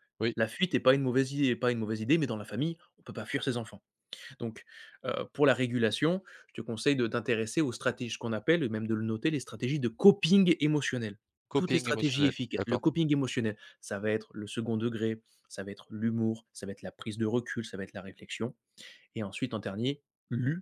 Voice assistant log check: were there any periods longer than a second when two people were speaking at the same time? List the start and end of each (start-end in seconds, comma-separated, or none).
11.6-12.8